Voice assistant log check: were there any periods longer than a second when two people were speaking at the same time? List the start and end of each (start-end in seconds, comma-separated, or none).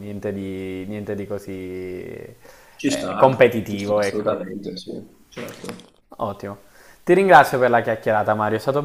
2.8-4.4